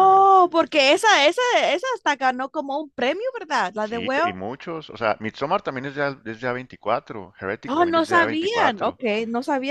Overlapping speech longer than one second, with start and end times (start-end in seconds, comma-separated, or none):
7.7-9.0